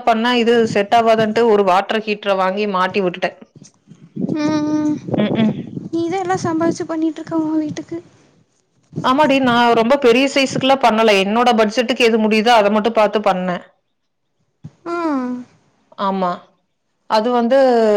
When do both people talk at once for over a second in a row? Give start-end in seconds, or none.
none